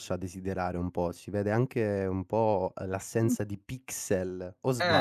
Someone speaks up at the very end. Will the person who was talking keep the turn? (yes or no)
no